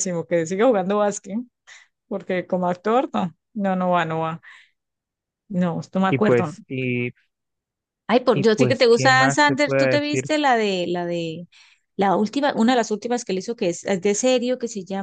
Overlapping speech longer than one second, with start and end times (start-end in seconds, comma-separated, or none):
8.3-10.3